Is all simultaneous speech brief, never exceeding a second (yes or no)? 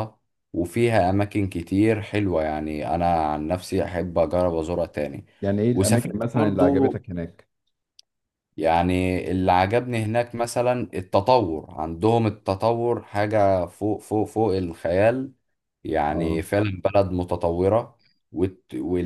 no